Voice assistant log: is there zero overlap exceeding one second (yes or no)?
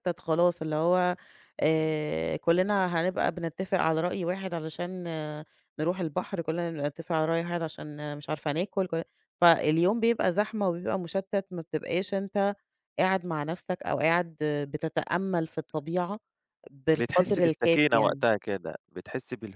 no